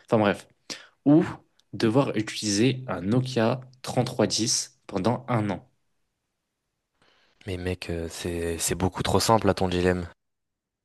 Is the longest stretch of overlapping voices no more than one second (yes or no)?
yes